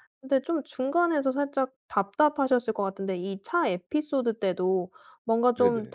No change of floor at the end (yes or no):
yes